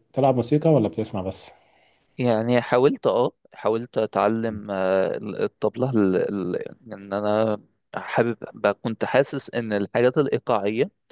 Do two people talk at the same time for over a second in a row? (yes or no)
no